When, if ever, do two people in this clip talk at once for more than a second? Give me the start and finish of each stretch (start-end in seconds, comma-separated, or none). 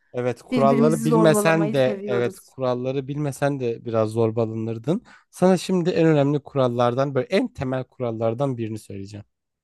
0.5-2.5